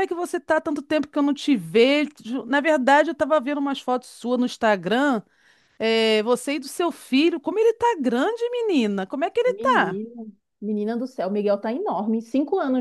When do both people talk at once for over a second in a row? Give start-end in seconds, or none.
none